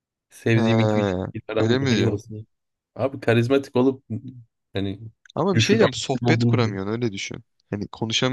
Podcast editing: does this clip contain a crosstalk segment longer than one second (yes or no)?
yes